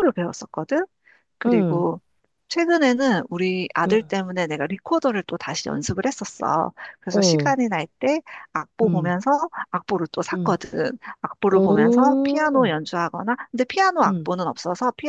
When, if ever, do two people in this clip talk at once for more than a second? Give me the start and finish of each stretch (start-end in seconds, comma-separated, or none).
11.5-12.8